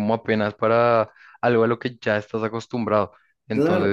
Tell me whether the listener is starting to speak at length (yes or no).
yes